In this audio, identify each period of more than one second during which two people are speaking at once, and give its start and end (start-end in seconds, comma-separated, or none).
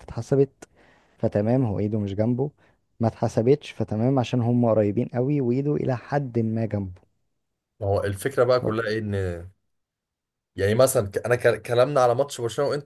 none